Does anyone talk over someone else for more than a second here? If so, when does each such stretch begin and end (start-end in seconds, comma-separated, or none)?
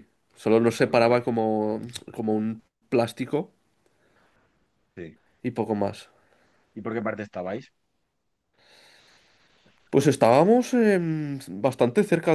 none